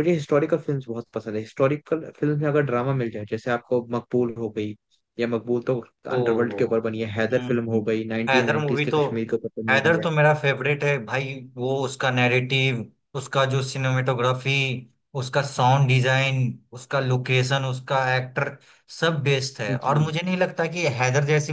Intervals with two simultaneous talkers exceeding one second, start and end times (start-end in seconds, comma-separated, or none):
7.3-9.0